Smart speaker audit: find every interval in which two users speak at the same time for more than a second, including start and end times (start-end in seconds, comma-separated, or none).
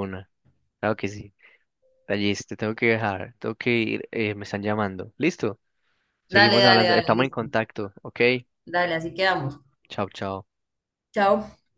6.3-7.5